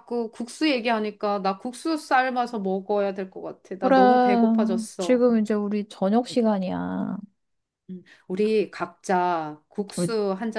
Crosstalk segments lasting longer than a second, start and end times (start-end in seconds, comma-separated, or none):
3.8-5.2